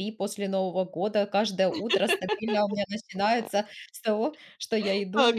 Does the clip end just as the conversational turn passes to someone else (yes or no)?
yes